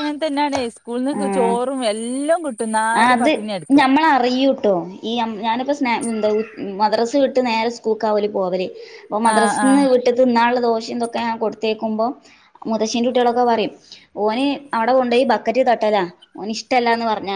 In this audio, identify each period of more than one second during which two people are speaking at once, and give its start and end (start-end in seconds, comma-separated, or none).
none